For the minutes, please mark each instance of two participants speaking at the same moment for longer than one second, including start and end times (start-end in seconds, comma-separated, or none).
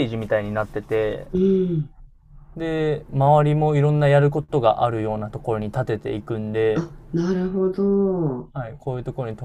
none